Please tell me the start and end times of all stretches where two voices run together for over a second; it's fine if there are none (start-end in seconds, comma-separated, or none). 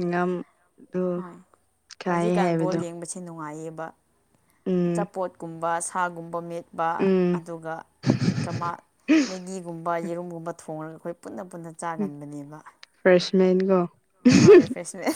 none